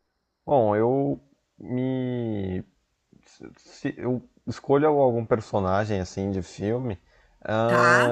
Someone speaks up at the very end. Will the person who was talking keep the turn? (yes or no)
yes